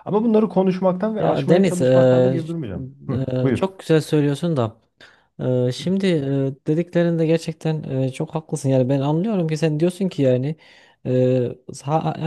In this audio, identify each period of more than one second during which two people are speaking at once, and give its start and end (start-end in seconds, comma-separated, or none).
1.2-2.4